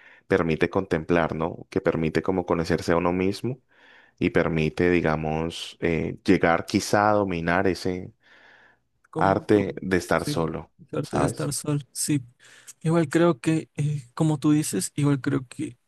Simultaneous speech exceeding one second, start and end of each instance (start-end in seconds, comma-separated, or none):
9.2-11.5